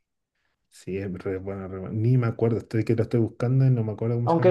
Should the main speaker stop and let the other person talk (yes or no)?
yes